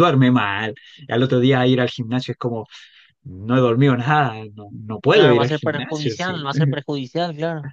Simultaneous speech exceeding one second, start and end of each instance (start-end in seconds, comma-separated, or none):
5.1-6.3